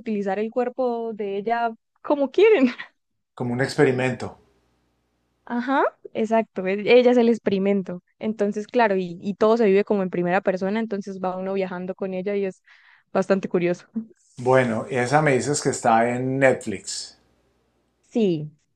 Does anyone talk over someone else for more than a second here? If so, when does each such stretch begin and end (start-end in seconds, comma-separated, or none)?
none